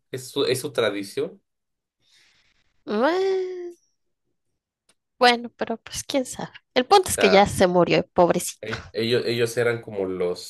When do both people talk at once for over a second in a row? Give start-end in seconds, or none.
none